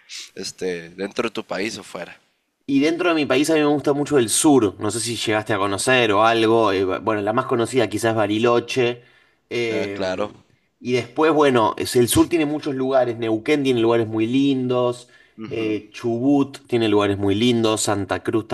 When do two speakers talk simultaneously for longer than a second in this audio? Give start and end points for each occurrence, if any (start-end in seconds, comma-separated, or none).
none